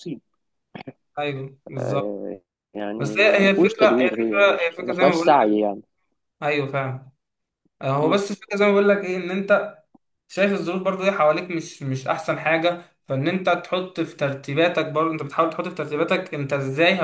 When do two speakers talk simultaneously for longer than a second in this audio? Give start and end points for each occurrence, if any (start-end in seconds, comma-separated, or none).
3.0-5.4